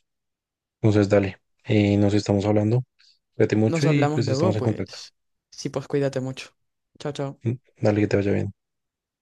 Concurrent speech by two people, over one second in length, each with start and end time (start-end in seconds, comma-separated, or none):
3.7-5.0